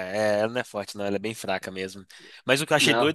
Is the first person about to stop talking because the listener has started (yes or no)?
no